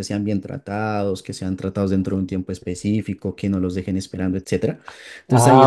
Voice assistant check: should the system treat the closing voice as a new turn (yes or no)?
yes